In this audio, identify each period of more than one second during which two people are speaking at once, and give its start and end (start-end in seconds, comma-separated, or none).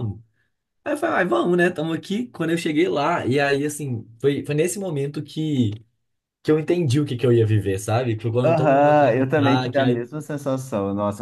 8.4-10.0